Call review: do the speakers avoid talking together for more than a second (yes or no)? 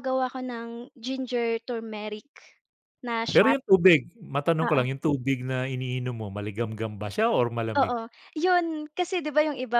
yes